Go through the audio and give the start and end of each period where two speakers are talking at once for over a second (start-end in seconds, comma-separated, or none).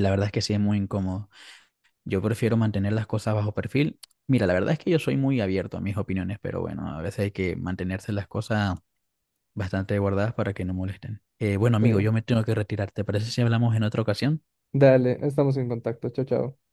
none